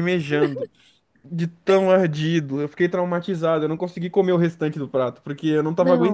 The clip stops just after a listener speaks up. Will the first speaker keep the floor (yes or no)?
yes